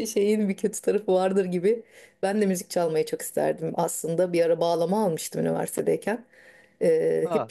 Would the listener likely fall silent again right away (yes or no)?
yes